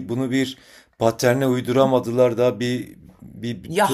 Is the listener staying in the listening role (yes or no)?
no